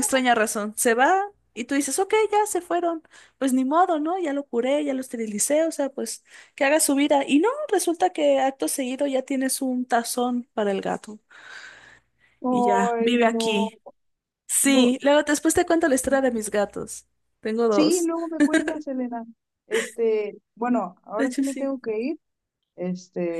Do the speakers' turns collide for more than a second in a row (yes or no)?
yes